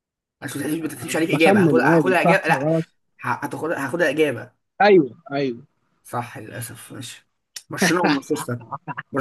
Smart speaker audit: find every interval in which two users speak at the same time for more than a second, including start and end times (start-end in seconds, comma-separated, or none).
1.3-2.7